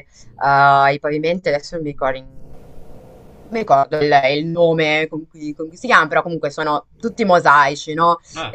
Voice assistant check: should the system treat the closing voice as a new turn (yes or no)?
no